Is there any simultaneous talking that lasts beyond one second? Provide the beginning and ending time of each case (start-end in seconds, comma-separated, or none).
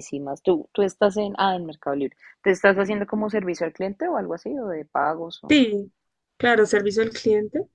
none